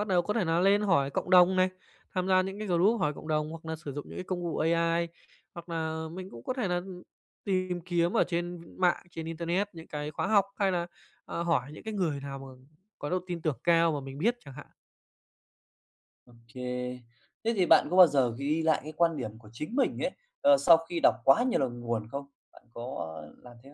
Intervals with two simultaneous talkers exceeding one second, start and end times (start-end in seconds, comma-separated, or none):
none